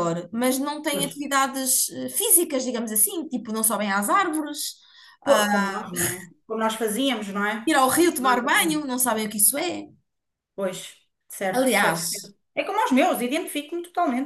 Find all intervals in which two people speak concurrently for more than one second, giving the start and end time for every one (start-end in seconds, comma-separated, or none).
none